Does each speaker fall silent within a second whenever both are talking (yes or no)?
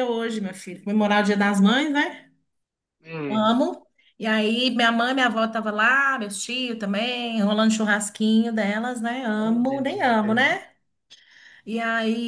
no